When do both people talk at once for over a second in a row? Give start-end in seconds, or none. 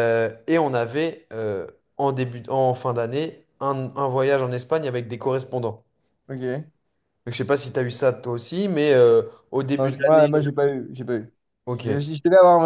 none